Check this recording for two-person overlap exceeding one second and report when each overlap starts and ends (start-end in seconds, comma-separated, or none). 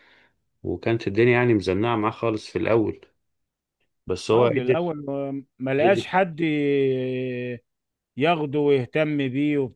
none